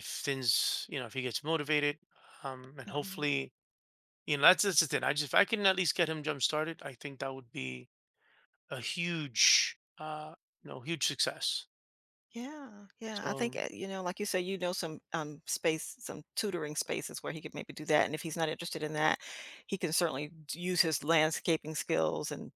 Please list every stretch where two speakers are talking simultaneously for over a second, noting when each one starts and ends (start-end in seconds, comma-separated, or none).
none